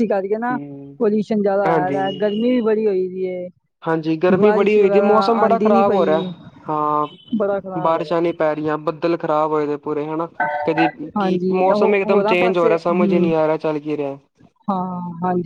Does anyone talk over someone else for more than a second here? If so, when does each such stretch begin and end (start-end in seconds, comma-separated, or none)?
11.2-13.3